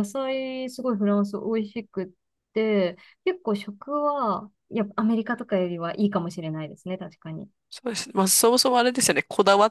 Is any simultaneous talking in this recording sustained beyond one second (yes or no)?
no